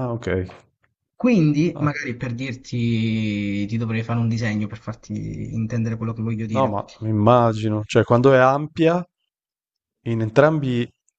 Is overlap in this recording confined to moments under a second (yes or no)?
yes